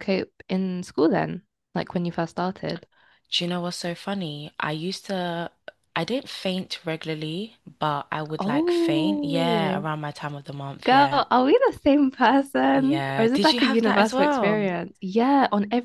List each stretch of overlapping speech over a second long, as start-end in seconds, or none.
8.4-9.9, 12.7-14.7